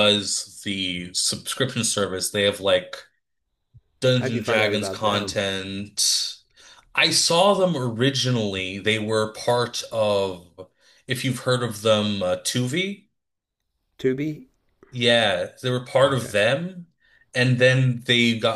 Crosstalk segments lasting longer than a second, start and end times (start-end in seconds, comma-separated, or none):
4.2-5.4